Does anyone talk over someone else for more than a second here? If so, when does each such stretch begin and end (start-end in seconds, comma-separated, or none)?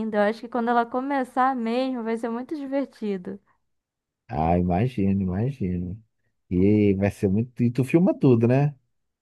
none